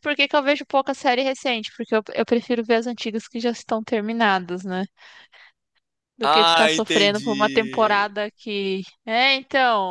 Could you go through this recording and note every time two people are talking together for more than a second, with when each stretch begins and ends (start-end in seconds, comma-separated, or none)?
6.2-8.1